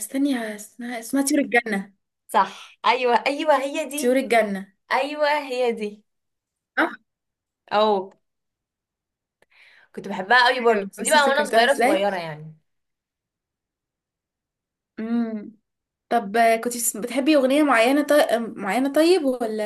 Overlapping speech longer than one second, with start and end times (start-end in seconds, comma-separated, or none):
10.6-12.1